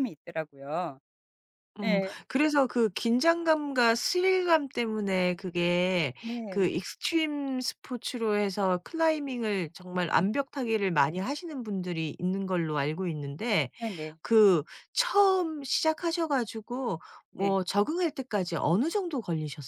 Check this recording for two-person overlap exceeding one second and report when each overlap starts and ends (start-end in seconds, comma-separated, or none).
none